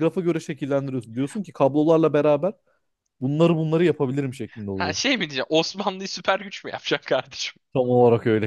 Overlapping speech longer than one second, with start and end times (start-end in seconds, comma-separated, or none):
none